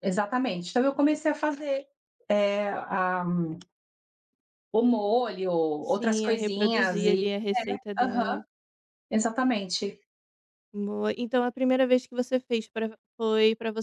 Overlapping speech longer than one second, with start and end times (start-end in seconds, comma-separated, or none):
5.8-7.3